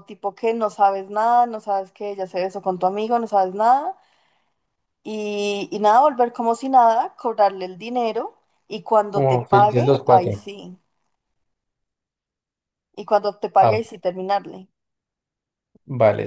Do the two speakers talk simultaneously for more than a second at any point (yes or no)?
yes